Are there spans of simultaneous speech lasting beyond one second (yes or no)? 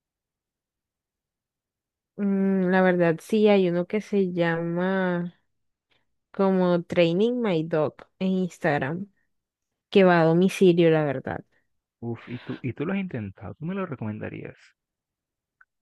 no